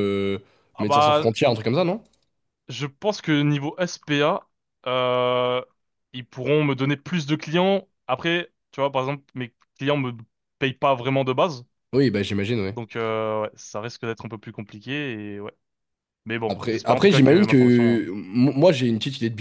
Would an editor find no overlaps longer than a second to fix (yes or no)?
no